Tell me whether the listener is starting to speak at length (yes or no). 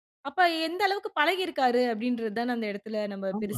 yes